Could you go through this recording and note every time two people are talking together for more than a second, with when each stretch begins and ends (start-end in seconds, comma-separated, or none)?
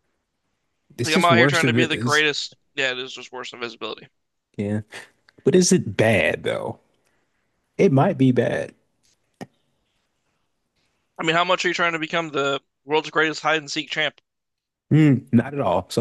1.0-2.2